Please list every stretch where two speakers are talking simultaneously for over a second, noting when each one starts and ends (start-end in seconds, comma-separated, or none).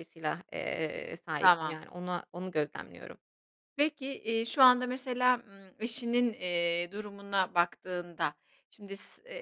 none